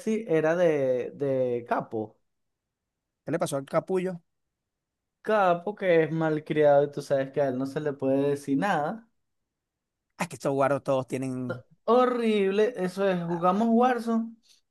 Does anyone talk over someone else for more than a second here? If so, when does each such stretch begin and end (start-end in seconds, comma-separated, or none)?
none